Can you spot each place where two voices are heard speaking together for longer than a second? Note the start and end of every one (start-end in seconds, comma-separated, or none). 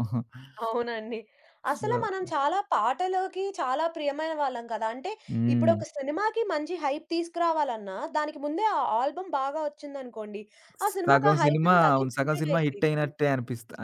11.1-13.1